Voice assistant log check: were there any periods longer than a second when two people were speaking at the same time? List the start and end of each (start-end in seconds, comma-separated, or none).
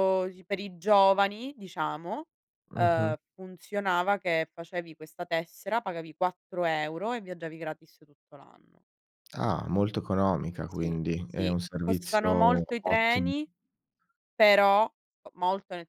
10.8-13.3